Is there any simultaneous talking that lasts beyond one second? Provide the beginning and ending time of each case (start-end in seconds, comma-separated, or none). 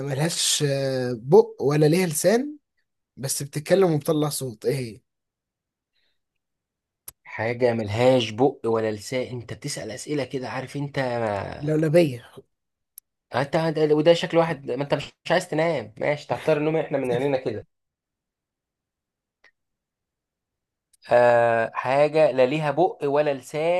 none